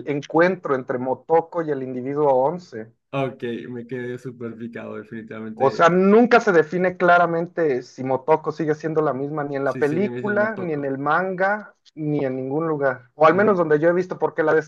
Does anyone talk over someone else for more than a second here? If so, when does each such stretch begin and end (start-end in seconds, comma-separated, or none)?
9.6-11.0